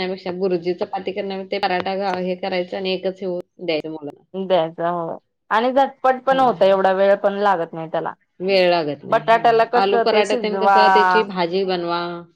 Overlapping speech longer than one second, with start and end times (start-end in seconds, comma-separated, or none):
9.1-11.2